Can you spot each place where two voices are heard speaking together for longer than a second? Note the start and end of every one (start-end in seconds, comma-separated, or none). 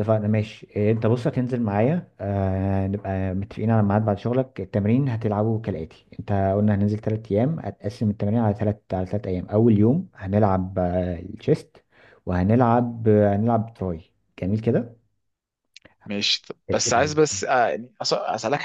none